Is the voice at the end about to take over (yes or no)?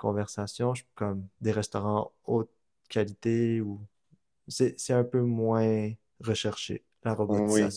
yes